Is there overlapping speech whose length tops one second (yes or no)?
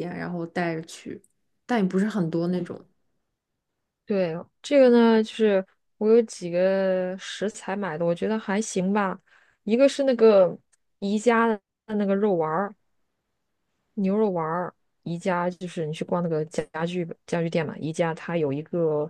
no